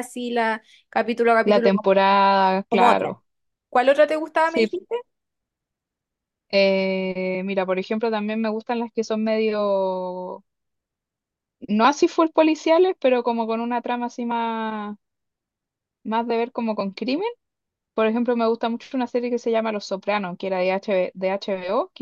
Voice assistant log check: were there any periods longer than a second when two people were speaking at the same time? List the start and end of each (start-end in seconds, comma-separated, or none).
none